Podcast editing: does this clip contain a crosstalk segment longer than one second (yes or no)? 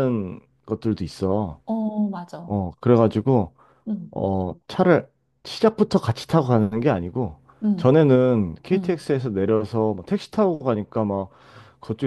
no